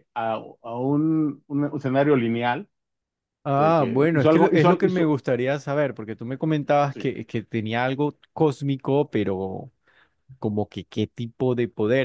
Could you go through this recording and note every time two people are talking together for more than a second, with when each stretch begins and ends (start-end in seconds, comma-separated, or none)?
3.5-5.1